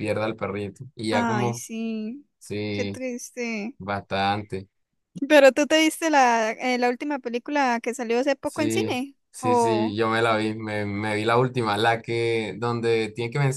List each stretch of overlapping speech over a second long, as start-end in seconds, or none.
8.4-10.0